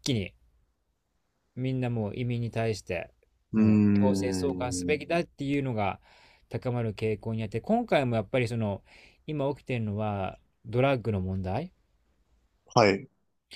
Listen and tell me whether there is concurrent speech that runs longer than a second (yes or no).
yes